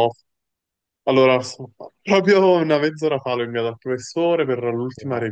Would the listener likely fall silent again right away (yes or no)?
yes